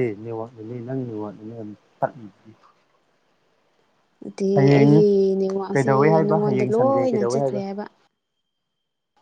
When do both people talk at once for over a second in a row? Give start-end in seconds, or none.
5.7-7.4